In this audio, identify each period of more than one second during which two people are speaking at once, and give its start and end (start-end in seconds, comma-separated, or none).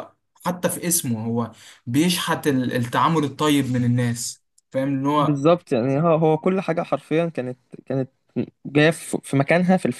none